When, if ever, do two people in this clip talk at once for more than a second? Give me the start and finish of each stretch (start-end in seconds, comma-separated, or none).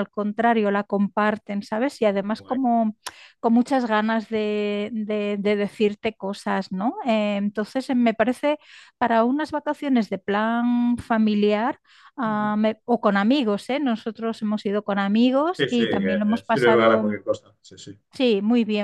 15.6-17.2